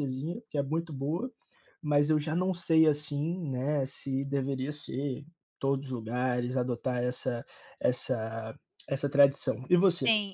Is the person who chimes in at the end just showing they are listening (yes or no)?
no